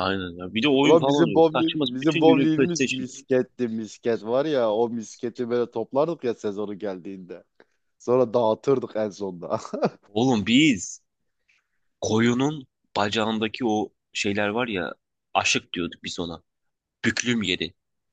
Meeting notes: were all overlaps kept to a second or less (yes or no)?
no